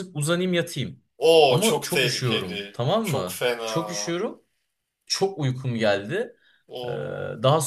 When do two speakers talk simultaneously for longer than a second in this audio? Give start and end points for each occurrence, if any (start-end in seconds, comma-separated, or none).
1.5-3.9